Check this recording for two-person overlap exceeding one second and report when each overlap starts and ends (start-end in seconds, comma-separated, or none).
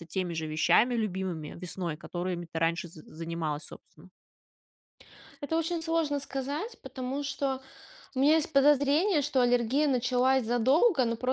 none